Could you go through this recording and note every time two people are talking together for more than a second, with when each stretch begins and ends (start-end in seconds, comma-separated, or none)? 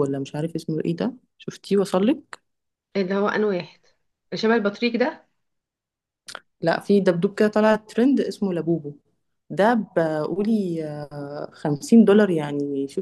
none